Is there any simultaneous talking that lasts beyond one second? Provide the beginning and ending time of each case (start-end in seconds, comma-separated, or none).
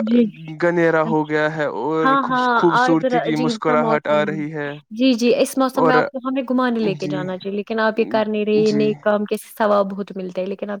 2.0-4.2